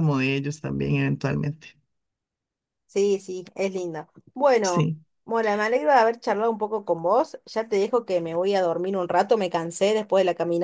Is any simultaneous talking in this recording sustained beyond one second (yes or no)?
no